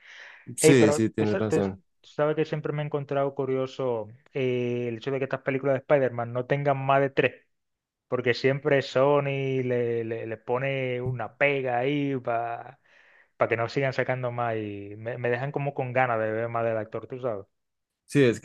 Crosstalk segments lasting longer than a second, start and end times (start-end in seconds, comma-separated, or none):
0.6-1.8